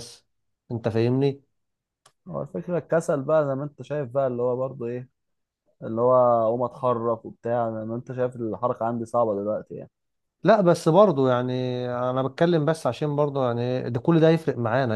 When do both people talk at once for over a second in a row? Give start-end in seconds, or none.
none